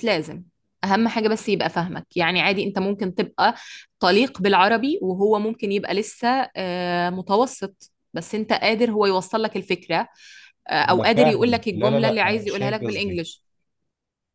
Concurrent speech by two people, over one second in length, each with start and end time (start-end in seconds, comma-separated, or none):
10.9-13.2